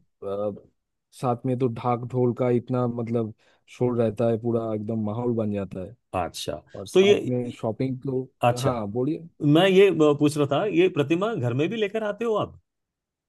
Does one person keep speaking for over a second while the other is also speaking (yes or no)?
no